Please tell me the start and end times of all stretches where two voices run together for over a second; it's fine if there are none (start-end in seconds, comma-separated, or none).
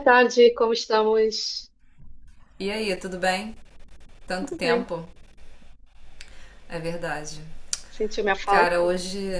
none